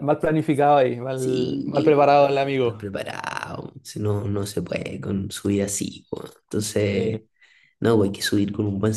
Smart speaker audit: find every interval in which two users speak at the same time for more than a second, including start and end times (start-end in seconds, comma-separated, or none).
1.1-2.8